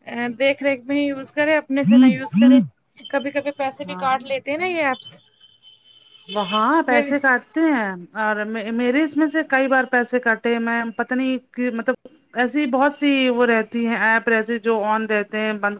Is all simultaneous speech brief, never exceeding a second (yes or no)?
yes